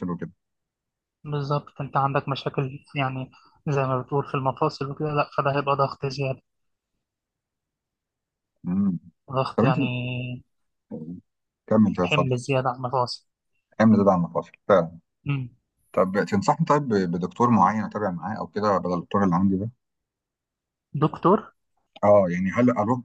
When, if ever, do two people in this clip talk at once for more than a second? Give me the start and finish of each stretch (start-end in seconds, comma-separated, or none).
none